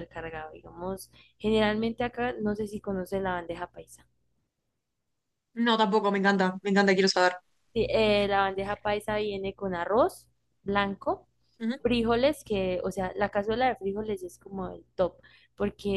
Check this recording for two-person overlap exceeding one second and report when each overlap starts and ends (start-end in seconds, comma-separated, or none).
none